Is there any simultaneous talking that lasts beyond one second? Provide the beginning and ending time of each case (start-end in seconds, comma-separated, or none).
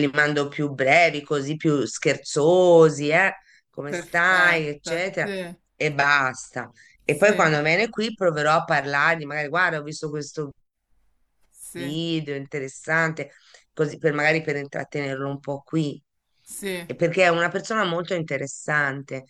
3.9-5.3